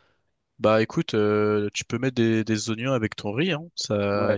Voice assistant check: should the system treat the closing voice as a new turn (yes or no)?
yes